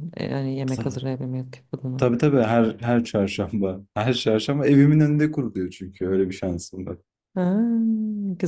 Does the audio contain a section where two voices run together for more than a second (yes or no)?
no